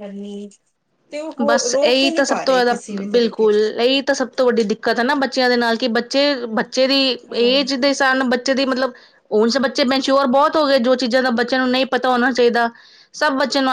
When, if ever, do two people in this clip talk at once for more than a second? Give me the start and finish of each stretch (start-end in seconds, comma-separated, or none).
1.5-3.6